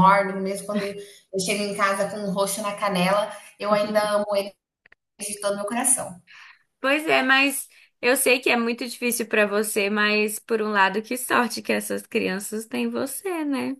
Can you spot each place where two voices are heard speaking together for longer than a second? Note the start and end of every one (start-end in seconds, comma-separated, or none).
none